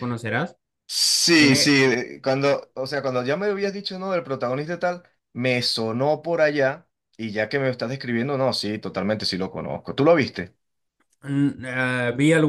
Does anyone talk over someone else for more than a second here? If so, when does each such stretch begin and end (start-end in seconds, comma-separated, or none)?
none